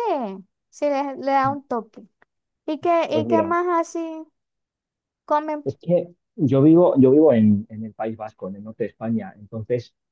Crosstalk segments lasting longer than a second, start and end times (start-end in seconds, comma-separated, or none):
none